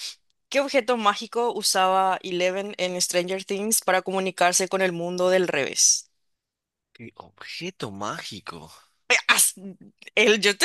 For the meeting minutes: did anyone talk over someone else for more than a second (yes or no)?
no